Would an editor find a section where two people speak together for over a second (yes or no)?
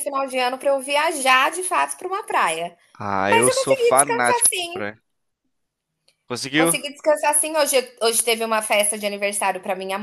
yes